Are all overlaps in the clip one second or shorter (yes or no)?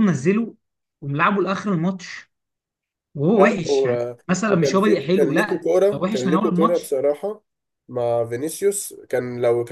no